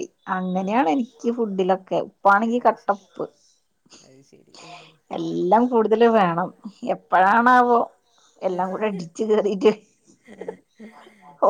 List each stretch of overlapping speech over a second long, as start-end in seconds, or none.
none